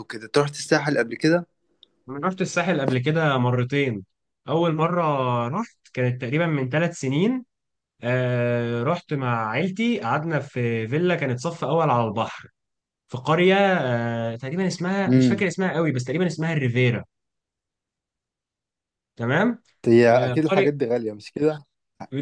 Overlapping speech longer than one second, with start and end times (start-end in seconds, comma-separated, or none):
none